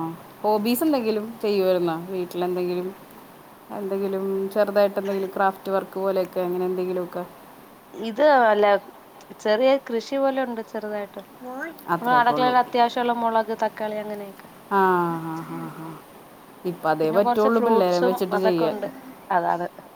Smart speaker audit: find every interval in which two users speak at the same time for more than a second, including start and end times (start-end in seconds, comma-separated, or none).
17.0-18.8